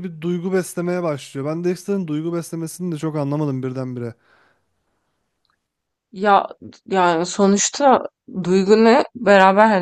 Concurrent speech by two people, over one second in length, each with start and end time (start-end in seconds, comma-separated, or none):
none